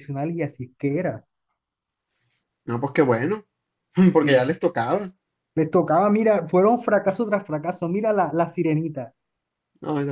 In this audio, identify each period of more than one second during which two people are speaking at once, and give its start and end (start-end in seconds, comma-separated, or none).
none